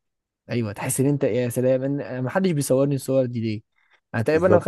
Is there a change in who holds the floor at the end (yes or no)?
no